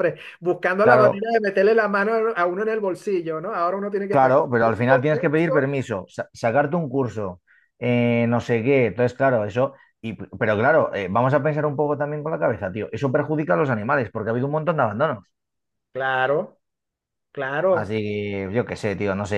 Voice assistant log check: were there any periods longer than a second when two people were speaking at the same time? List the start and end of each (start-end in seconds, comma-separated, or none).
4.1-5.7